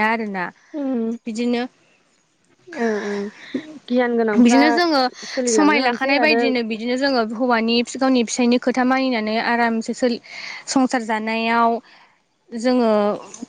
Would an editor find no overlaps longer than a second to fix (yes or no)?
yes